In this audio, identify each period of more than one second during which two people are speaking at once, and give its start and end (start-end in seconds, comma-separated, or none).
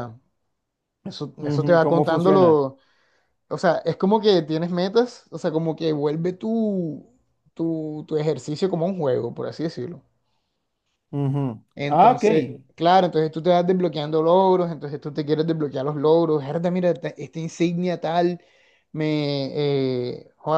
1.4-2.6